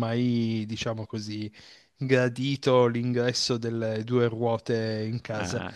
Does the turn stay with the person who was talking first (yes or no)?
yes